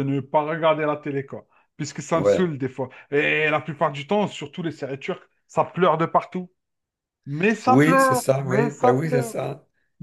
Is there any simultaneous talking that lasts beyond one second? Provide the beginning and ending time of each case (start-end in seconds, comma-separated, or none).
7.7-9.3